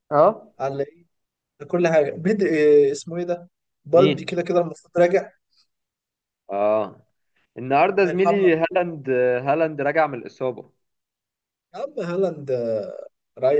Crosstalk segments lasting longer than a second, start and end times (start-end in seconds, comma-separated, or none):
none